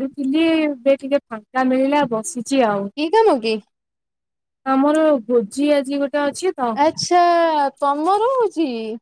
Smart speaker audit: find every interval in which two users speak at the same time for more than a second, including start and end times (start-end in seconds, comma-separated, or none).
none